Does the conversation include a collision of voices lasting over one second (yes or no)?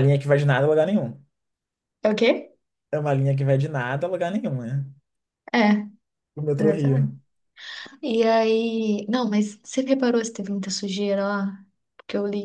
no